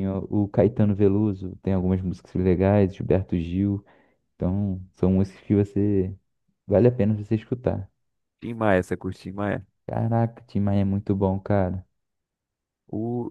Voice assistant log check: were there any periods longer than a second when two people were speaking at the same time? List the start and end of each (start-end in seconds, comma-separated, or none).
none